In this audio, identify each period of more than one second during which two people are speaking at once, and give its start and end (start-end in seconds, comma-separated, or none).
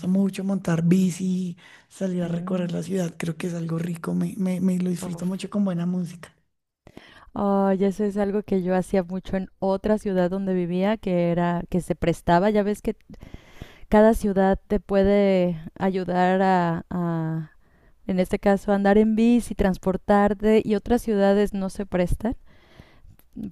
none